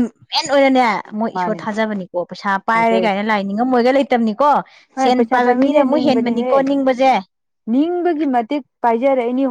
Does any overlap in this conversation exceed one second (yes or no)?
yes